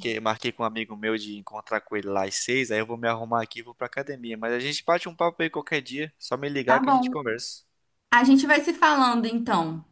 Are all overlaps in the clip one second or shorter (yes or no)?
yes